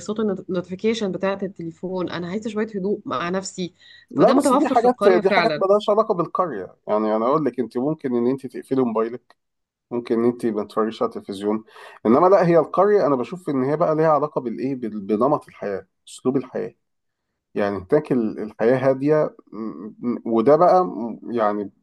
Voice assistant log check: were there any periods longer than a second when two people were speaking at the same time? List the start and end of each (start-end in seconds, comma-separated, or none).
4.1-5.6